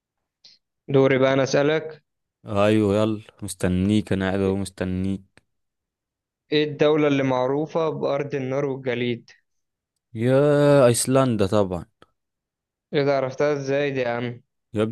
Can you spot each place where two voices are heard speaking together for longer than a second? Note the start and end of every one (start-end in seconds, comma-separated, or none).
none